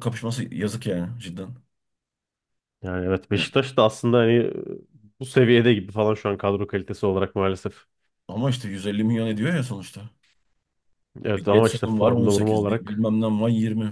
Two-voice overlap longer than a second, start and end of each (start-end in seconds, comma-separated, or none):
11.3-13.0